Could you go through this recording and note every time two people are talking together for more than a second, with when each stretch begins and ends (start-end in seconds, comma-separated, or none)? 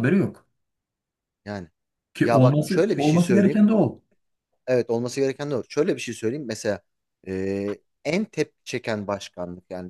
2.2-3.6